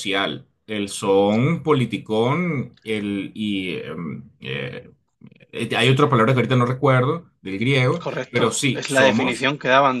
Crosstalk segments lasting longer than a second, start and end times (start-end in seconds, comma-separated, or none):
8.0-9.5